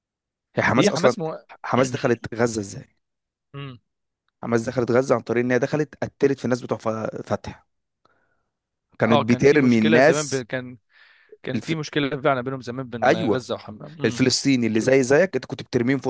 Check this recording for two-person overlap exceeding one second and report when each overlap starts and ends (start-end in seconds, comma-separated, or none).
9.1-10.4